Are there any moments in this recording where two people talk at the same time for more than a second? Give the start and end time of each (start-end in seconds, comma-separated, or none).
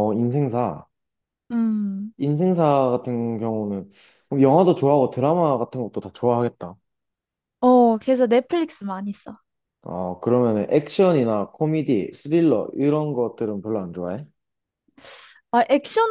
none